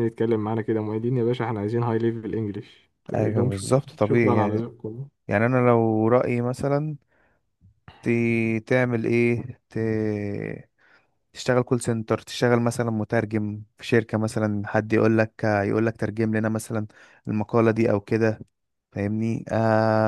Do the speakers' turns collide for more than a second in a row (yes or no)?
yes